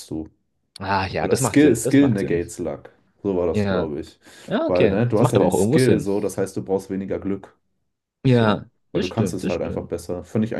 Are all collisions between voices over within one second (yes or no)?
no